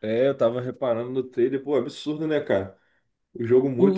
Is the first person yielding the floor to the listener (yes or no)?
yes